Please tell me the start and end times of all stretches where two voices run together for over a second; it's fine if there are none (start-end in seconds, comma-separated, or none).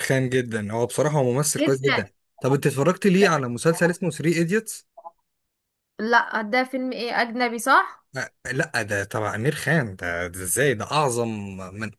none